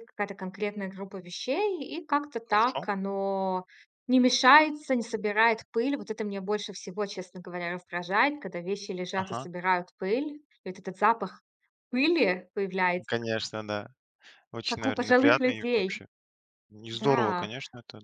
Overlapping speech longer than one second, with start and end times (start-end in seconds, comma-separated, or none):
14.7-16.0